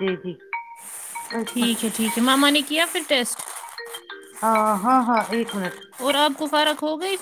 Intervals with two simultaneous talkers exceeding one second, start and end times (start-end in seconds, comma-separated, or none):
none